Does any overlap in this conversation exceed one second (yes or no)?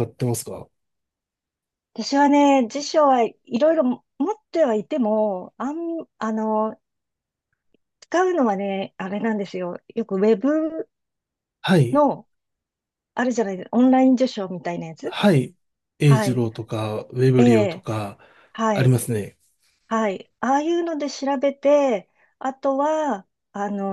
no